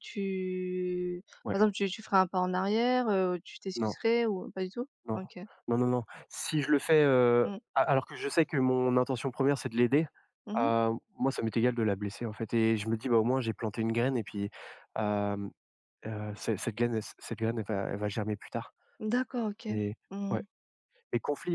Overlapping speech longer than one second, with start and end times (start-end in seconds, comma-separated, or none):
none